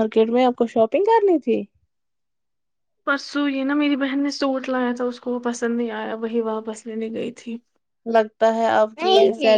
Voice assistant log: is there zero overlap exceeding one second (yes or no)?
yes